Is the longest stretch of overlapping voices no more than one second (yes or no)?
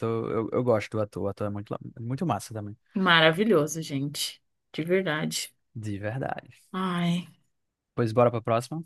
yes